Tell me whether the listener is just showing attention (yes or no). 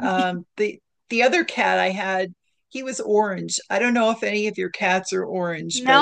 no